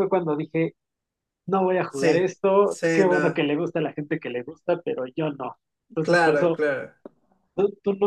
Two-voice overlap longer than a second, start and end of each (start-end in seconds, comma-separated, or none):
1.9-3.5